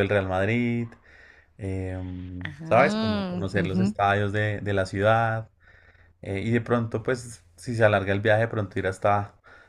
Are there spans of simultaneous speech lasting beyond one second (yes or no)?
yes